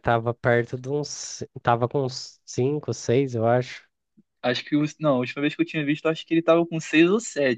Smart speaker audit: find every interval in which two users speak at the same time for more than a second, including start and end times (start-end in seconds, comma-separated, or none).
none